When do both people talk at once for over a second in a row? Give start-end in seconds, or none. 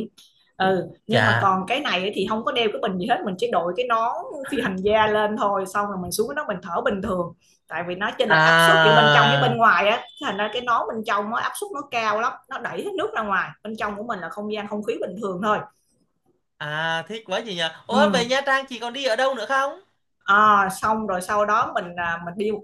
8.3-9.6